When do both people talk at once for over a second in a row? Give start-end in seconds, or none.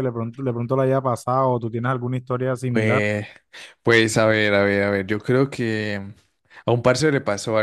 none